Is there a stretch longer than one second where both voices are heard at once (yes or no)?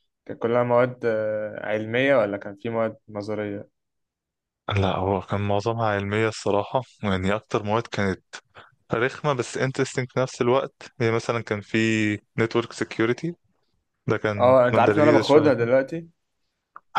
yes